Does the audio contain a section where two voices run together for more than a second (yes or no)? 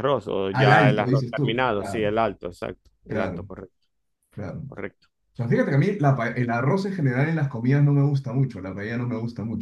yes